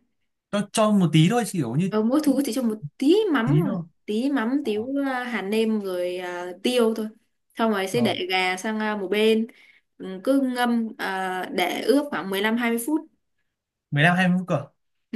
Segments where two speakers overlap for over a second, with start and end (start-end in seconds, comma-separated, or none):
none